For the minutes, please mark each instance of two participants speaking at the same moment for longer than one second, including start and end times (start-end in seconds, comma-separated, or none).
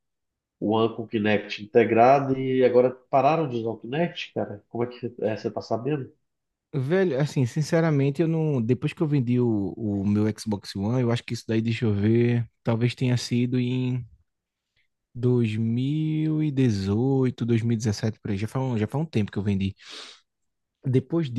none